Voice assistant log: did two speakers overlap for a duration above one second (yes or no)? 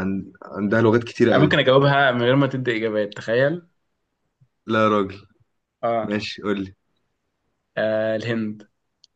no